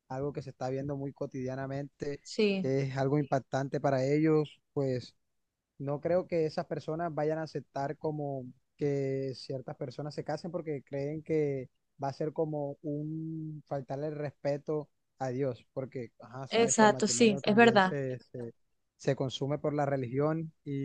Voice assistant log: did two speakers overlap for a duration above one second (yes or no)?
yes